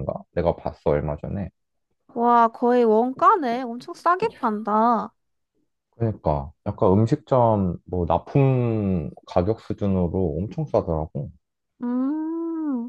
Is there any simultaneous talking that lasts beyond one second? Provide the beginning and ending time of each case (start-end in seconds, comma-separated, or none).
none